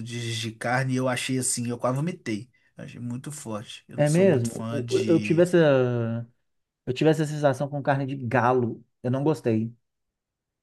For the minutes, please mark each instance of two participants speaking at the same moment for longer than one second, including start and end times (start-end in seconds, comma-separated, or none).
4.0-5.5